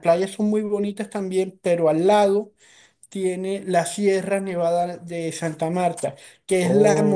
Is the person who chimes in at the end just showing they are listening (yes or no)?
yes